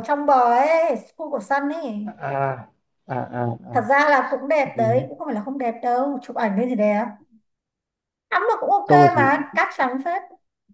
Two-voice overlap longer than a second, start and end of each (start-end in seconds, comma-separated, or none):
none